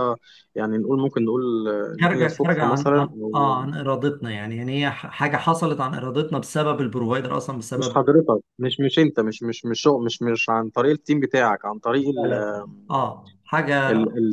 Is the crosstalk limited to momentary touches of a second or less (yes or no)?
no